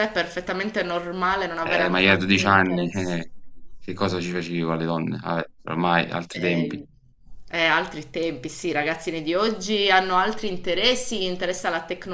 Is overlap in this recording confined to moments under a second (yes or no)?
no